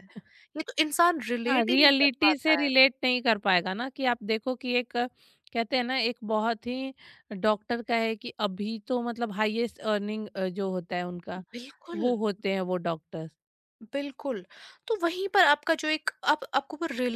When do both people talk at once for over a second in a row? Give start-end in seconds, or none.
1.5-2.7